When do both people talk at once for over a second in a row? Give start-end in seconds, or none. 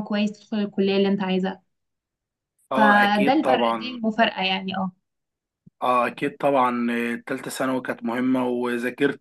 2.8-4.0